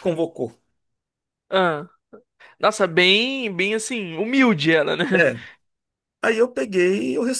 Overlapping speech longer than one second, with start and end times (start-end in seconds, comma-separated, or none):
none